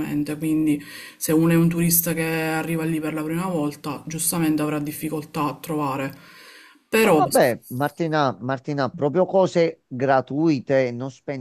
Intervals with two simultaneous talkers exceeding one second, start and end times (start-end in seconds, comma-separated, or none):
none